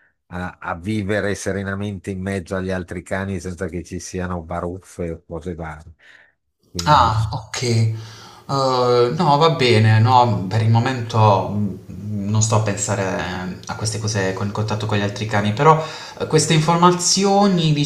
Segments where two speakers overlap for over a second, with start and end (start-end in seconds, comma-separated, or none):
none